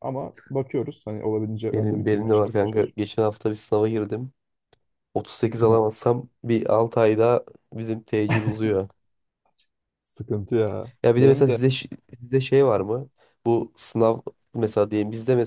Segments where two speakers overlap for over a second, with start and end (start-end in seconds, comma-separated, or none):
1.7-3.0